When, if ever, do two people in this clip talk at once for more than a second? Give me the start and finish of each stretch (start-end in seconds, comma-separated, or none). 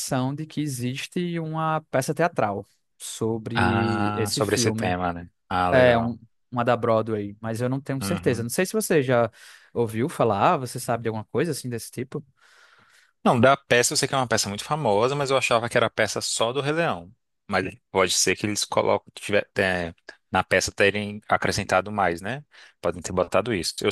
3.5-5.0